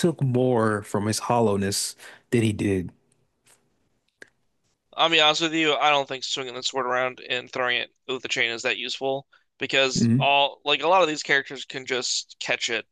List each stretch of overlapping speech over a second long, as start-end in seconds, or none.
none